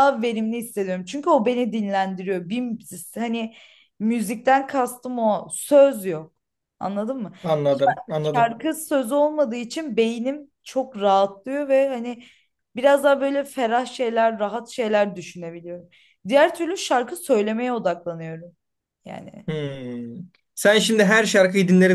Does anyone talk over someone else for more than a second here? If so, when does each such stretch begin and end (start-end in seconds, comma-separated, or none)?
none